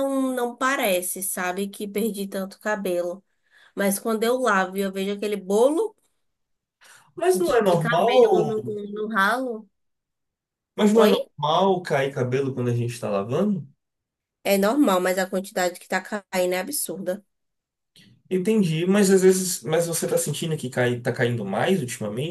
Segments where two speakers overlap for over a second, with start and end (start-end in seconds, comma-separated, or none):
7.3-8.6